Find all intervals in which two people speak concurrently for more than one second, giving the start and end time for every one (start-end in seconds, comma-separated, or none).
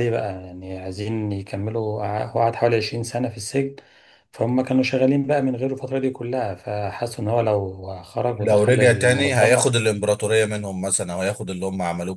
8.4-9.6